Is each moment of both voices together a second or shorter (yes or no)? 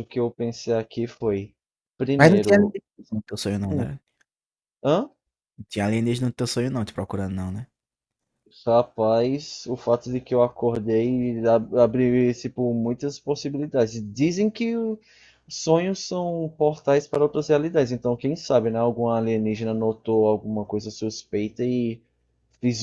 yes